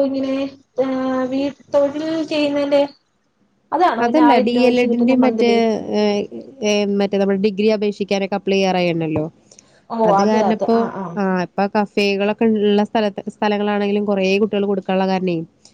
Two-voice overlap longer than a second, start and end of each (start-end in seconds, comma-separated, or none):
none